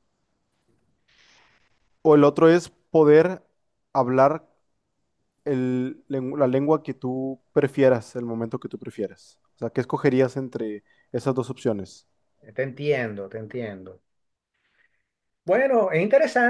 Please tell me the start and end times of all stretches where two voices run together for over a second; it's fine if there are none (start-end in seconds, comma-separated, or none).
none